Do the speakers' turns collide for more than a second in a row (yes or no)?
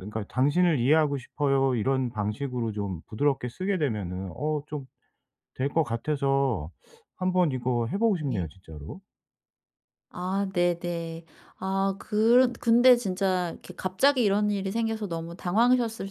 no